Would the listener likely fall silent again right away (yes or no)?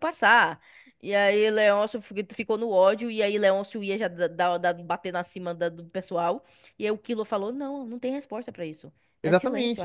no